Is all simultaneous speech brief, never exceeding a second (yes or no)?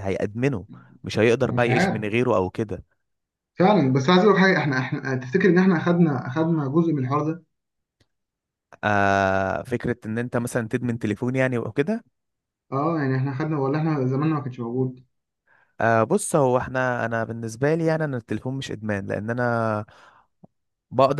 yes